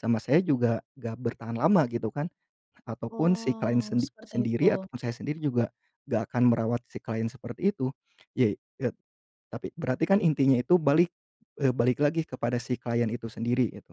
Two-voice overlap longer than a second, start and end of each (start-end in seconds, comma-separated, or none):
3.1-4.9